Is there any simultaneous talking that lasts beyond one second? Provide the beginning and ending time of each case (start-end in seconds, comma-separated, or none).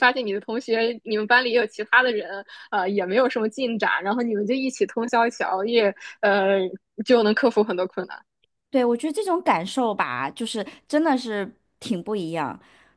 none